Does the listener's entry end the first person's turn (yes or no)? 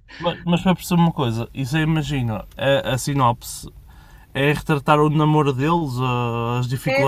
yes